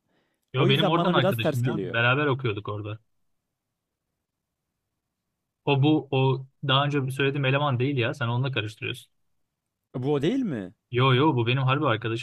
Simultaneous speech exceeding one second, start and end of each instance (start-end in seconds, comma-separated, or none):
0.6-1.9